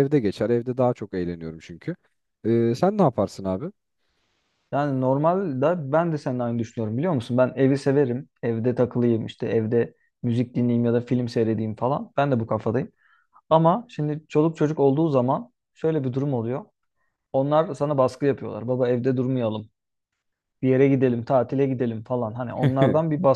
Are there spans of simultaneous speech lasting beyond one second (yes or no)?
no